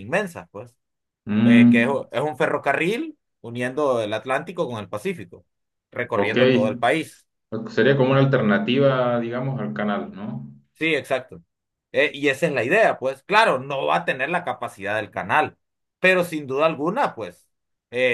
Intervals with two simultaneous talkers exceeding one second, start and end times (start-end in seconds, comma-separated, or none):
none